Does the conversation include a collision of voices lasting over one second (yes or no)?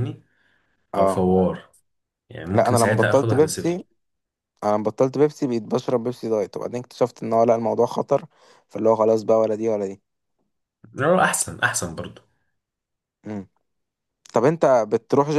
yes